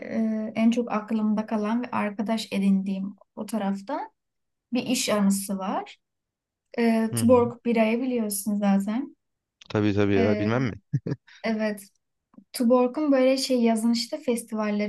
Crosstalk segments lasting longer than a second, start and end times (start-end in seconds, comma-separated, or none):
none